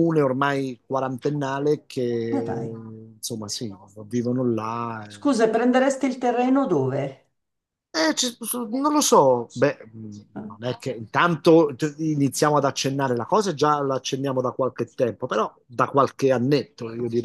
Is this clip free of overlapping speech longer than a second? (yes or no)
yes